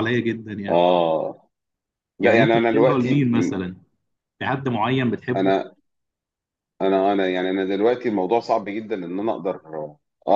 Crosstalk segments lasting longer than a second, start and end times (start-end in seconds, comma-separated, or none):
2.2-3.5